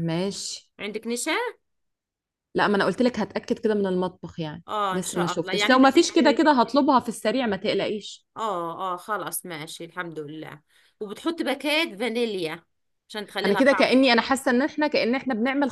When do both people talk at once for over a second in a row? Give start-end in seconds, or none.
4.7-6.5